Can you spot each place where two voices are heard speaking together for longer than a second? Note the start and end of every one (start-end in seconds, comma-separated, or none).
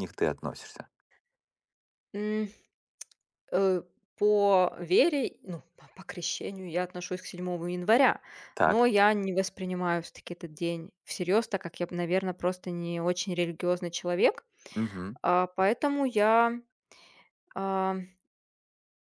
none